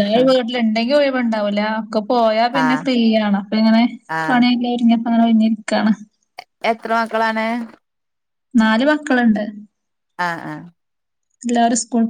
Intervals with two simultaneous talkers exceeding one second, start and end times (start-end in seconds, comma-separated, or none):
none